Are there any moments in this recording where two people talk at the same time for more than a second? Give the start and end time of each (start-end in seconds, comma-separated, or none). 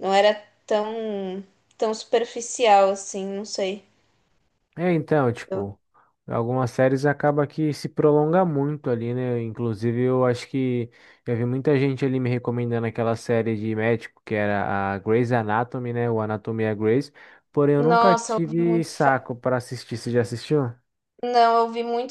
17.8-19.3